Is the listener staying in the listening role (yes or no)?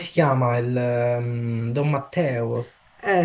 no